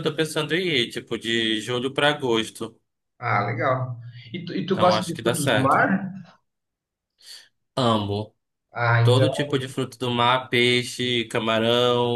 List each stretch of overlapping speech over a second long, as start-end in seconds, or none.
4.7-5.9